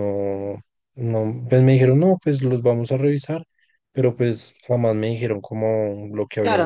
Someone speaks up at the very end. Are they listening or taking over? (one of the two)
taking over